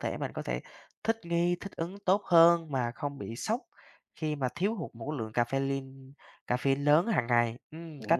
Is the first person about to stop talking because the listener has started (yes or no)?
yes